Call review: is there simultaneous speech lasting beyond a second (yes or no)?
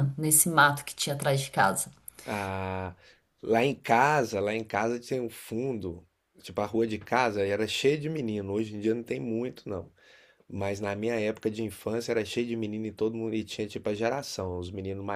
no